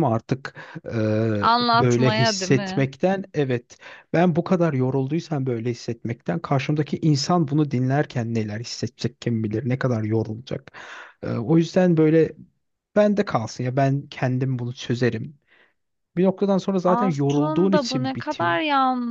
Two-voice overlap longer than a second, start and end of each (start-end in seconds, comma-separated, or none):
1.4-2.9, 16.8-18.6